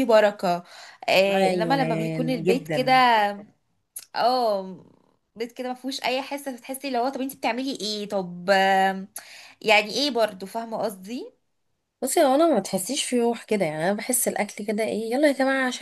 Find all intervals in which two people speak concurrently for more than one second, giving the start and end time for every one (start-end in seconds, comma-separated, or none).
1.3-2.9